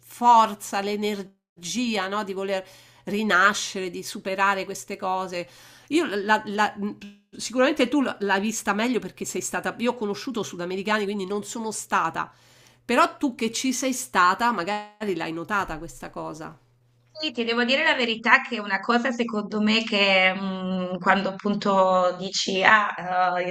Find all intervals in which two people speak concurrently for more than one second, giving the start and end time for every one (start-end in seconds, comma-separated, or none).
none